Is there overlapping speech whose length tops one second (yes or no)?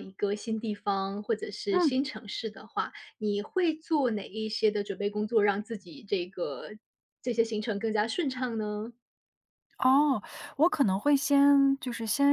no